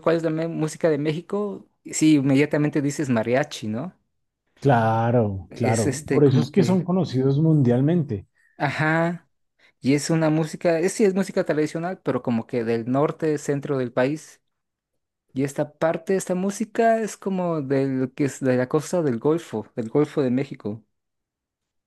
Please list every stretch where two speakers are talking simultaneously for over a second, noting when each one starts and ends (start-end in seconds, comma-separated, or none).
5.5-6.8